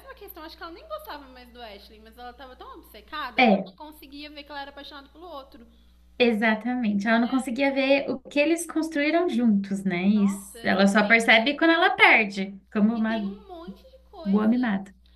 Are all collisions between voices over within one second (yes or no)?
no